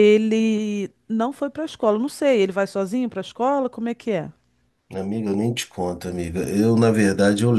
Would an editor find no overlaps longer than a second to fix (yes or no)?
yes